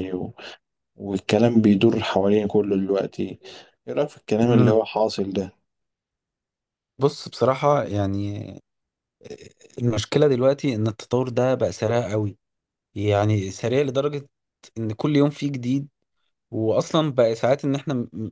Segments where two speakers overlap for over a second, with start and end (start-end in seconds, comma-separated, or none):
none